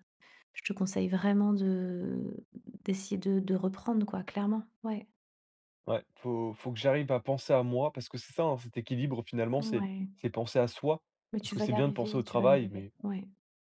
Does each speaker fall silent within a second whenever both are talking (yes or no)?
no